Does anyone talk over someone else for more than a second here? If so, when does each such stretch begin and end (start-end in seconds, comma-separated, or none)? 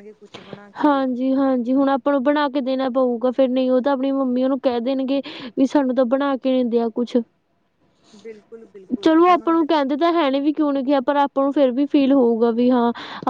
none